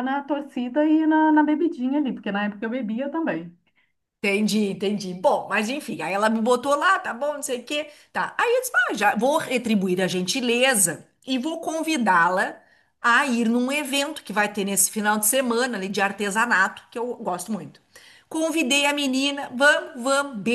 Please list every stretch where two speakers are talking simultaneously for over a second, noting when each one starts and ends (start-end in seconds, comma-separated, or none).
none